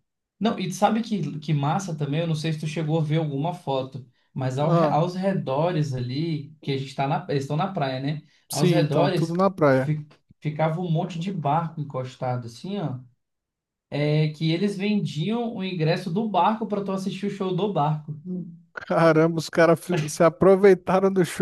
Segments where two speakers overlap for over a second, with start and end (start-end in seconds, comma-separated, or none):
8.5-9.9